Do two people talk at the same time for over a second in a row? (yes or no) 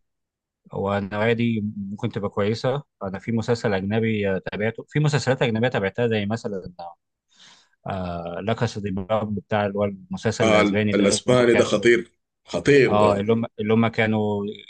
yes